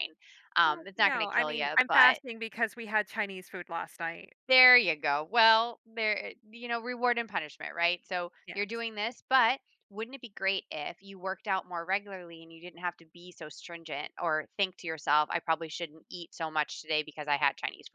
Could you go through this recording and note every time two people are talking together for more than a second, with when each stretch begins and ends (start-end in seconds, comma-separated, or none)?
0.7-2.2